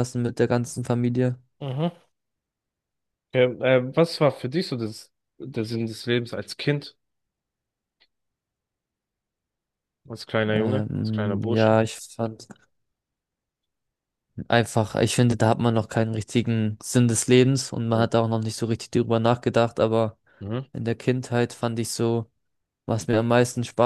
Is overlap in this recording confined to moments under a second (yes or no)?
no